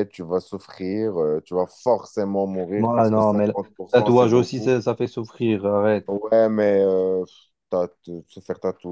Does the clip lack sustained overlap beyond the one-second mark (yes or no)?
no